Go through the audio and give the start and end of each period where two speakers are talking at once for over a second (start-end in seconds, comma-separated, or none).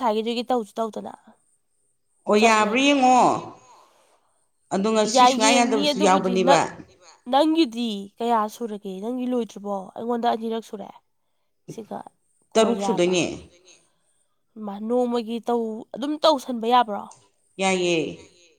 5.1-6.6